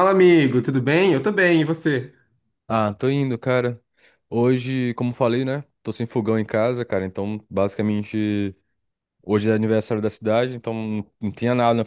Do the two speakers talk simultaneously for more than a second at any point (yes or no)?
no